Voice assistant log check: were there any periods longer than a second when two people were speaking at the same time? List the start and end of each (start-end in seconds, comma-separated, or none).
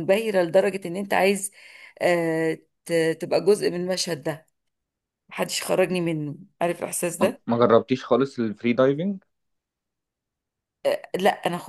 none